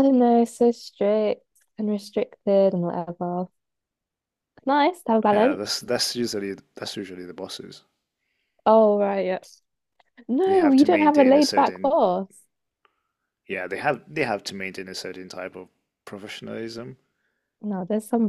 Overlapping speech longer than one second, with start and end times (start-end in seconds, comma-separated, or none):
10.4-12.0